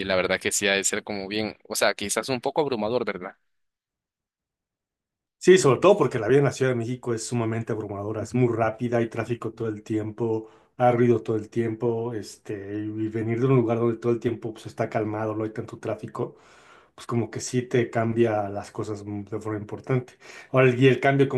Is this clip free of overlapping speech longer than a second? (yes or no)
yes